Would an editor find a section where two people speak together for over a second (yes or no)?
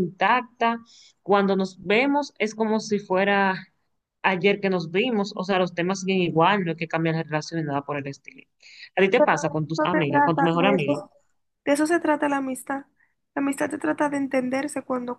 yes